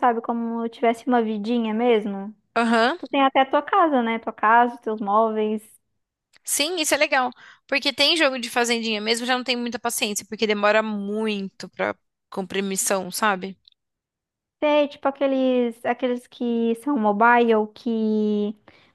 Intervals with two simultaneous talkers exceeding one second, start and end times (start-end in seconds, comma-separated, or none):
none